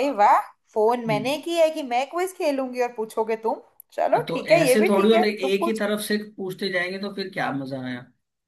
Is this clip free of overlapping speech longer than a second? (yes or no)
no